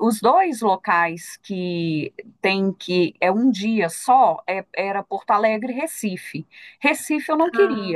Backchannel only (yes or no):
yes